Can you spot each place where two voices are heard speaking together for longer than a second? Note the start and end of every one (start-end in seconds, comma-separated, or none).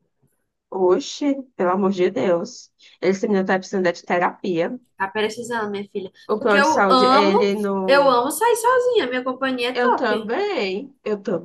6.3-8.2